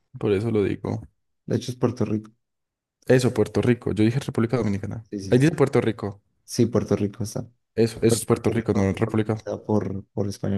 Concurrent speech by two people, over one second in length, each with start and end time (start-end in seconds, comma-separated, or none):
8.1-9.4